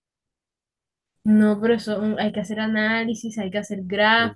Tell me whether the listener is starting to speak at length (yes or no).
yes